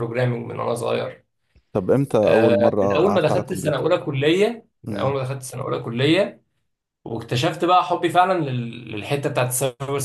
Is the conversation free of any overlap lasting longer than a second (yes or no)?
no